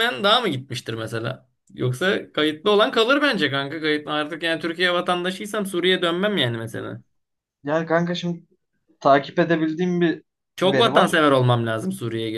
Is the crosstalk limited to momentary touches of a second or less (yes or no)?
yes